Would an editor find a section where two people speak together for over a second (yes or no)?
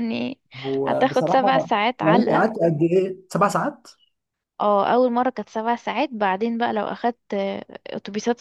yes